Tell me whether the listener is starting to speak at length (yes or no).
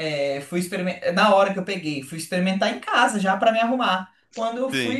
yes